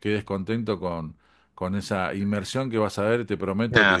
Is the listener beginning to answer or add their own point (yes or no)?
yes